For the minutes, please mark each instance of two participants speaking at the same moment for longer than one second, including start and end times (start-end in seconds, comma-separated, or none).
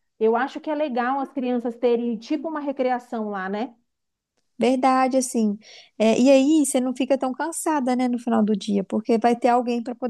none